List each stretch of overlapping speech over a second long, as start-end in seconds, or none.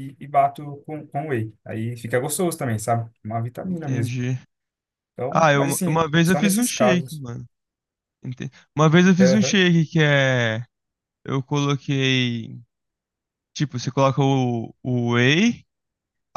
5.3-7.2